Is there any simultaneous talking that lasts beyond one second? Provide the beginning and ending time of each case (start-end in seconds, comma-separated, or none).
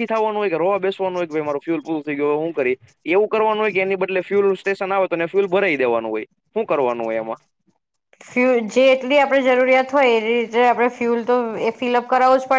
none